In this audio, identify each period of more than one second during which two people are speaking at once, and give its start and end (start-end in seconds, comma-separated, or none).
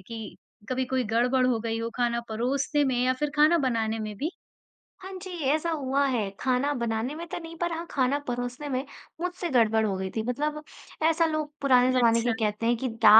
none